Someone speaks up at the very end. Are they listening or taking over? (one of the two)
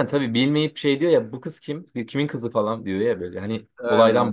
listening